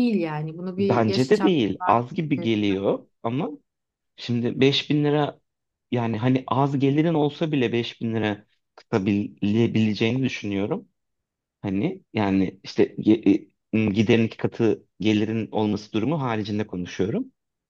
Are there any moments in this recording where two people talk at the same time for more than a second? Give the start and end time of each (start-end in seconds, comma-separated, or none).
0.8-2.5